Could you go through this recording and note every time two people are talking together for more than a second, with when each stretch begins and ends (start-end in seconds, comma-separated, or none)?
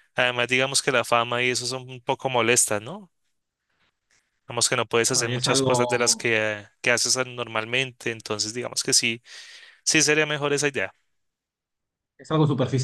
5.1-6.3